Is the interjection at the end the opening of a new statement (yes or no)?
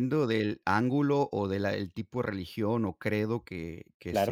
no